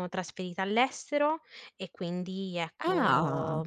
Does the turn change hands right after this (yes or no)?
no